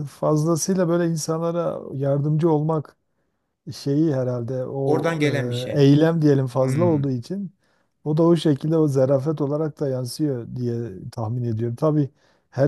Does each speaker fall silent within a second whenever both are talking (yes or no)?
yes